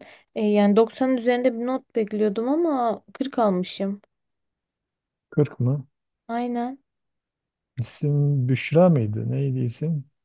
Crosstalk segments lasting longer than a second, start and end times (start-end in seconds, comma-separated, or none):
none